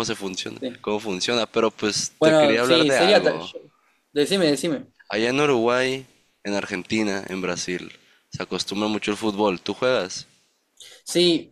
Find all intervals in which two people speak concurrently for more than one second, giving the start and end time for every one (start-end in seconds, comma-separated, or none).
2.2-3.5